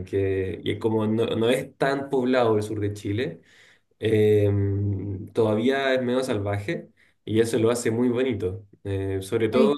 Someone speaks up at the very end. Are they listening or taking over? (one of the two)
listening